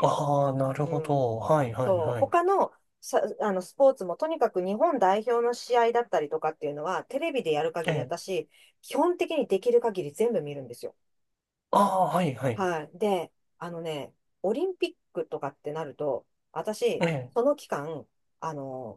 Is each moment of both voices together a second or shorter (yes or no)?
yes